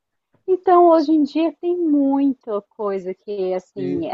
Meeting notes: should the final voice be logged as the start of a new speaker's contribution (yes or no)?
no